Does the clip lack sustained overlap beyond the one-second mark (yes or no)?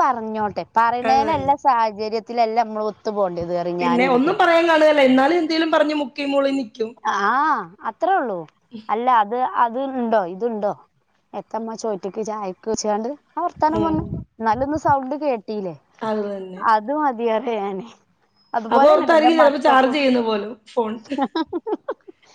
no